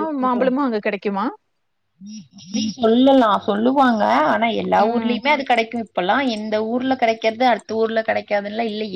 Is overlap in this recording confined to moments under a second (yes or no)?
yes